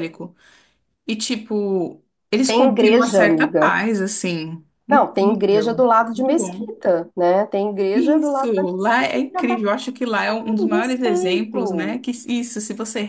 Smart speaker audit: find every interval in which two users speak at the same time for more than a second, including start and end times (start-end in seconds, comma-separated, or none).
2.5-3.8, 4.9-6.8, 7.9-9.6, 10.6-12.0